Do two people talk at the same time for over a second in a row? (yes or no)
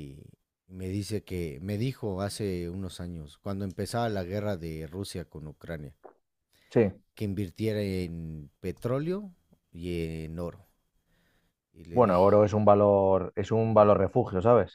no